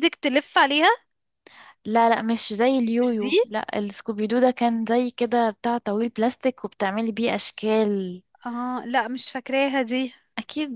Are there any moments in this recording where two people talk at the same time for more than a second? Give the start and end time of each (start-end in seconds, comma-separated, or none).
none